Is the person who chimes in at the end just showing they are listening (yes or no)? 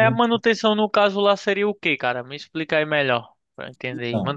yes